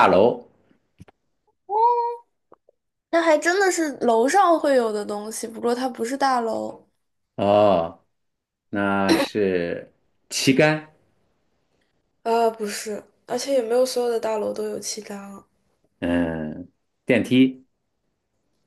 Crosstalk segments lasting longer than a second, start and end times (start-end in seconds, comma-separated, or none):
none